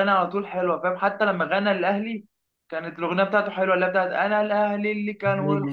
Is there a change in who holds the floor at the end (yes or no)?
no